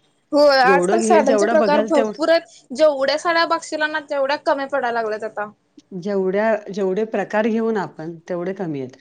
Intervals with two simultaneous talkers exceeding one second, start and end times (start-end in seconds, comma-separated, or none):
0.7-2.1